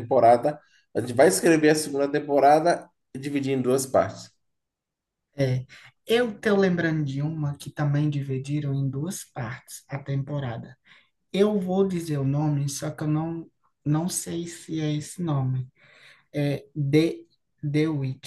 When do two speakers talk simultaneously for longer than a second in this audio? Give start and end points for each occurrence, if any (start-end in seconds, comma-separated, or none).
none